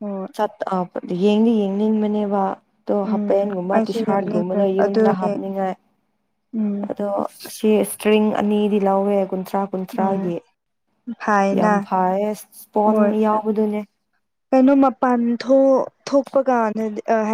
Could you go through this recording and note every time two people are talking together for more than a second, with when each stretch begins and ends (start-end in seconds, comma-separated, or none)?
3.1-5.3